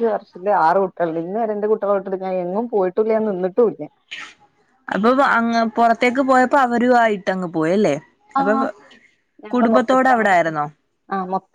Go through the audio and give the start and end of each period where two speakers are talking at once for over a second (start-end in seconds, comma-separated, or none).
none